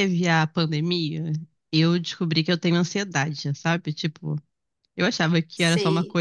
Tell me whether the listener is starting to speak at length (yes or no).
no